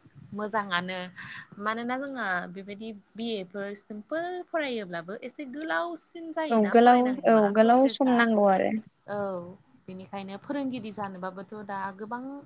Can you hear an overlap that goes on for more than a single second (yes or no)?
yes